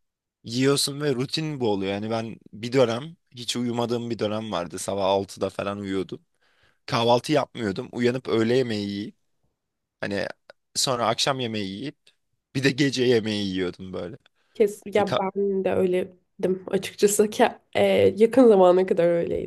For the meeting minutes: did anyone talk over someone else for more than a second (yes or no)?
no